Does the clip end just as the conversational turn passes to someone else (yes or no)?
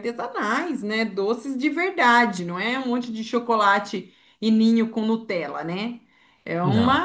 no